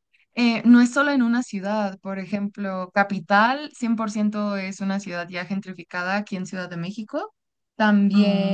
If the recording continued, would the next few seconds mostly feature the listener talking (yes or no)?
no